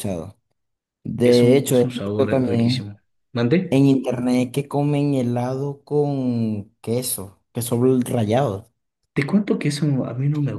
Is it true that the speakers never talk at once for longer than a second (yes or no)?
no